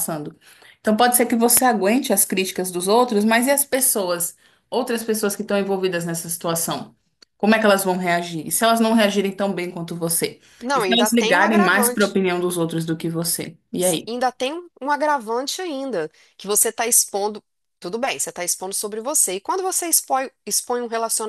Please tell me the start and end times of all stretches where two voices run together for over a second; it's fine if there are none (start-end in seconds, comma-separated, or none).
10.6-12.2